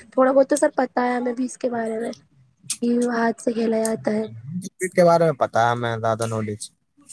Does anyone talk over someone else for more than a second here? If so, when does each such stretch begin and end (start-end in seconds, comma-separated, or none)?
none